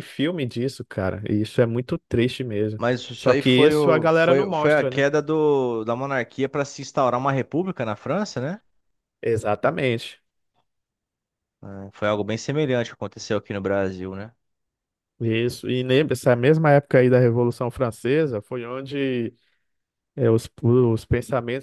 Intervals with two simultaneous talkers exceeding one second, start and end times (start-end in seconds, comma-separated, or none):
2.8-5.0